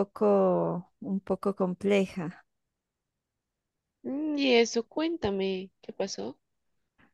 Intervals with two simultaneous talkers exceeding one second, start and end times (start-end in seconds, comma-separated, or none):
none